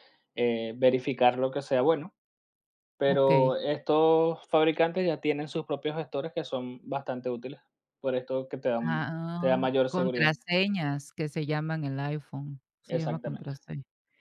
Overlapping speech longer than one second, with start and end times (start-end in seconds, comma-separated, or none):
8.8-10.3